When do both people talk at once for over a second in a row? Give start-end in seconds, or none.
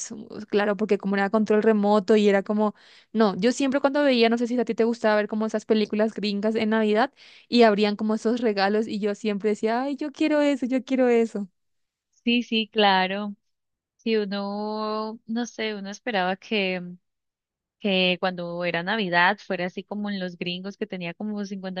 none